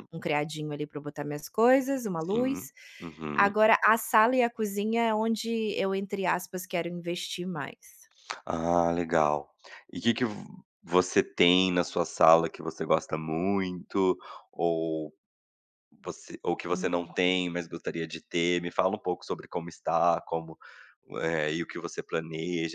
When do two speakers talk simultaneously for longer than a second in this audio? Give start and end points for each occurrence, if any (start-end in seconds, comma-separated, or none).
none